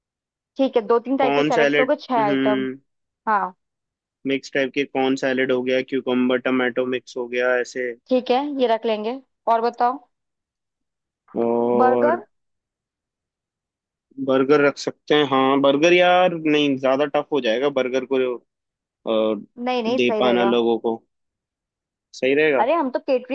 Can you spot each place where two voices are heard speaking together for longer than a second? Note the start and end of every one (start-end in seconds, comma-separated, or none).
1.2-2.7